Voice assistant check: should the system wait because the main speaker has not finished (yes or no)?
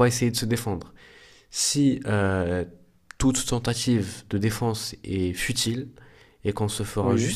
yes